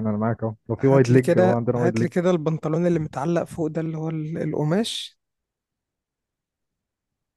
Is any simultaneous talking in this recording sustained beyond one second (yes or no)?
yes